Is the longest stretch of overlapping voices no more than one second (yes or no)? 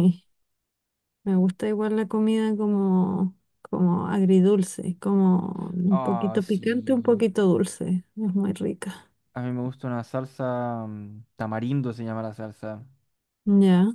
no